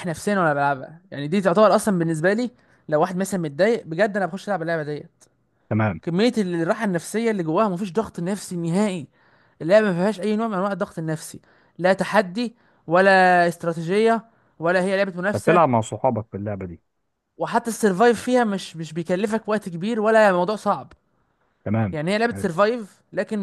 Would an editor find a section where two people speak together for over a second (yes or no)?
no